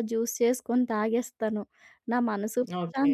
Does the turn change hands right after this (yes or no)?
no